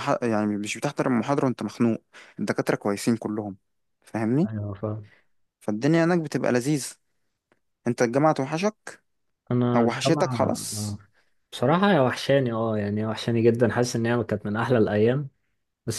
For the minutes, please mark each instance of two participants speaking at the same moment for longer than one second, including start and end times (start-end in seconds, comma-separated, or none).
9.8-11.0